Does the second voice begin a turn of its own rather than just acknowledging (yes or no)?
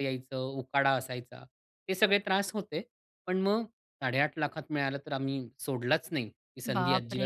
yes